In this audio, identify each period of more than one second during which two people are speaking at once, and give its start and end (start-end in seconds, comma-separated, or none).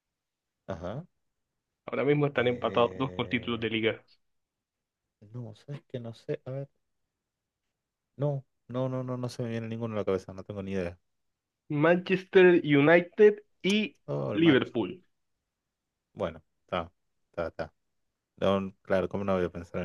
2.4-3.7